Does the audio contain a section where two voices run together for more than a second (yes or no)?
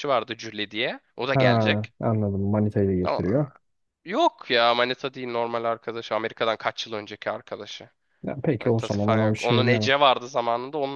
yes